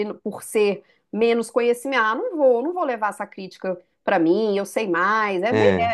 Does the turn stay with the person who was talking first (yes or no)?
yes